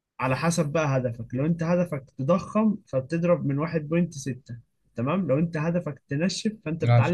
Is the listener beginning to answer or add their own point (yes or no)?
no